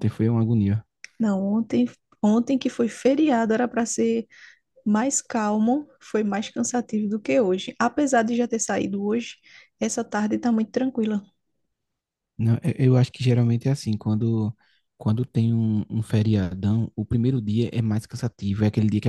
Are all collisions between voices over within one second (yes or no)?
yes